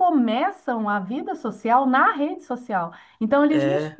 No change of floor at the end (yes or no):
yes